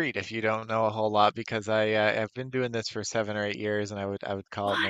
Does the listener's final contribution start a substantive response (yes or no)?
no